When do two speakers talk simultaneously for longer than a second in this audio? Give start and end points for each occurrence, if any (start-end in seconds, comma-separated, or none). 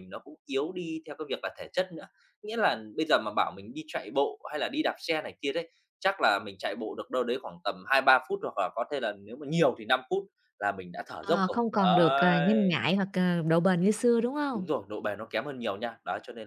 11.2-12.8